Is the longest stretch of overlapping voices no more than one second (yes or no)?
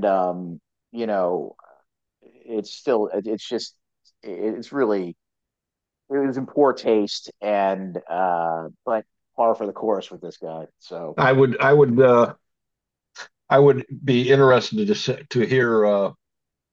yes